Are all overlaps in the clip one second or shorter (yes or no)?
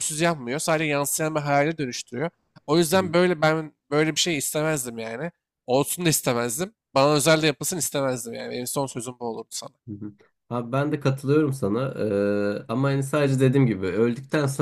yes